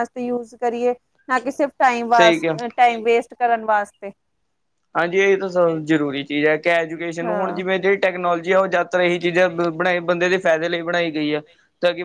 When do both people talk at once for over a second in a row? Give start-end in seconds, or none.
none